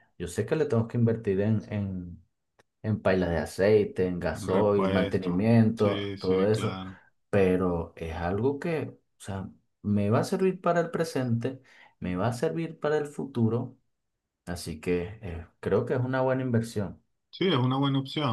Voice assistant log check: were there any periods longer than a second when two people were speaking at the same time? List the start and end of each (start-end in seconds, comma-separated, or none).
4.5-6.8